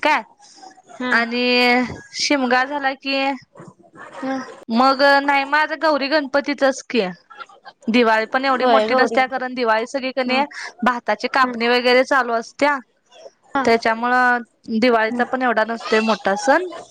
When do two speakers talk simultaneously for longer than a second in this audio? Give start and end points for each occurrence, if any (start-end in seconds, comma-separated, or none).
none